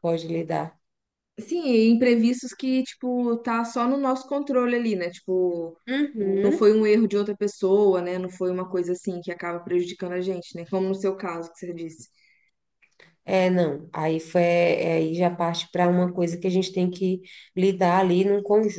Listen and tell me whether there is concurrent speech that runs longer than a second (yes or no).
no